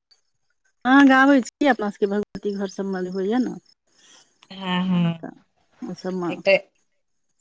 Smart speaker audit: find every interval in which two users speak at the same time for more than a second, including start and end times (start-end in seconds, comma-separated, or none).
none